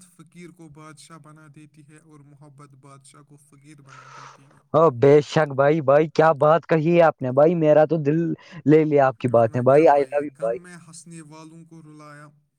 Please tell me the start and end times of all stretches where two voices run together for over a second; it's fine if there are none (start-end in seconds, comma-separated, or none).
none